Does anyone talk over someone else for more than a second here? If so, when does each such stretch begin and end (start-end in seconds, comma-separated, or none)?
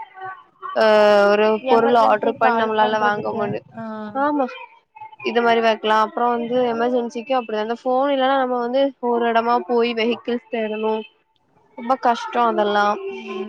1.7-3.4